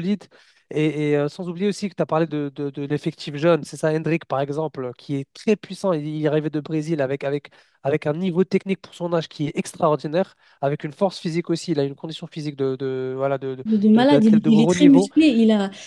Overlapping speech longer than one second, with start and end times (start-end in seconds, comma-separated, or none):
13.7-15.1